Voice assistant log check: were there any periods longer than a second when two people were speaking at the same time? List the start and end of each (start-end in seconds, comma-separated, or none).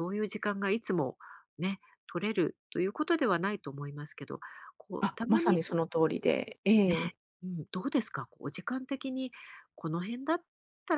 none